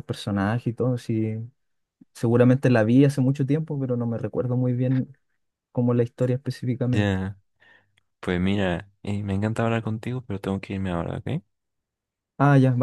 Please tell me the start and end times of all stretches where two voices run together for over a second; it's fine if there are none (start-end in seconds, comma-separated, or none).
none